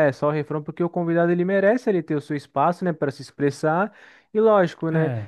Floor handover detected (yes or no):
no